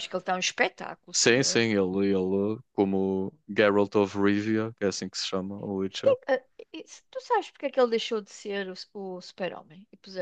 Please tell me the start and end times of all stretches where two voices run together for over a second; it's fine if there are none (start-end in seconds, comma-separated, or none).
none